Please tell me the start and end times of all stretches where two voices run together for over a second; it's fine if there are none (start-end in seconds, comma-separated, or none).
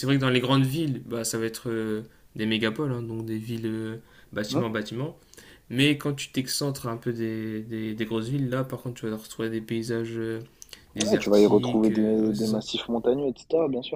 11.0-12.6